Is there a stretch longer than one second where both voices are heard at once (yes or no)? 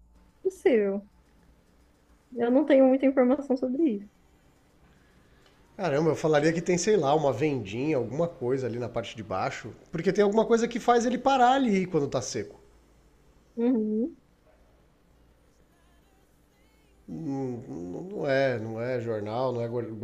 no